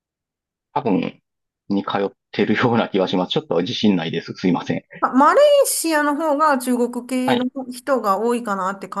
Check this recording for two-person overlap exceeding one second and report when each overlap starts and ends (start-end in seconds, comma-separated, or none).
none